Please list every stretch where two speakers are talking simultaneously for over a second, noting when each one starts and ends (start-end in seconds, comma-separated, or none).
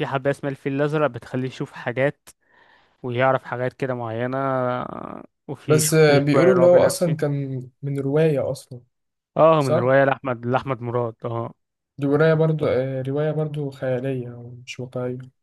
5.7-7.2